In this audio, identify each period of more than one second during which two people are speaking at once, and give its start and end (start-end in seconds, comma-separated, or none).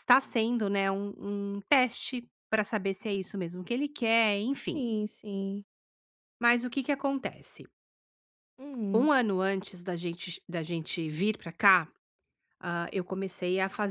none